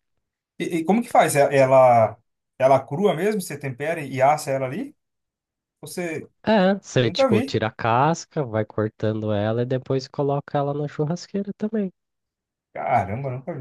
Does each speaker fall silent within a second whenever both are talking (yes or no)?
yes